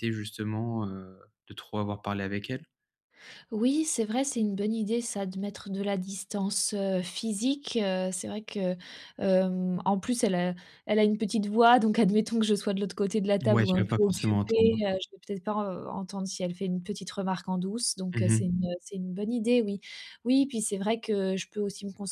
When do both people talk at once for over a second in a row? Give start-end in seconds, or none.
13.5-14.8